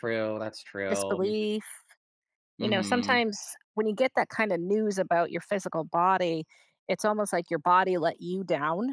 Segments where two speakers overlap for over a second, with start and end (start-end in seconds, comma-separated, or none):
none